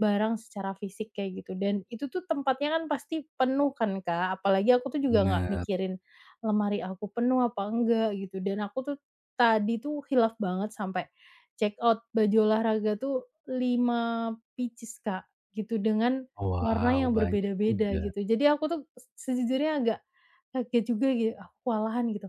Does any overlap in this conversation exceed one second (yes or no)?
yes